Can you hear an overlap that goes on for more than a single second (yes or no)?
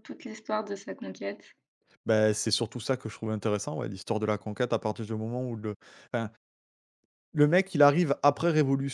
no